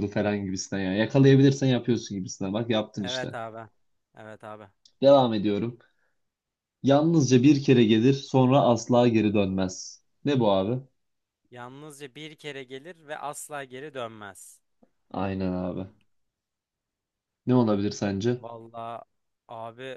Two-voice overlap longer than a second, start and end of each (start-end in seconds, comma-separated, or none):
none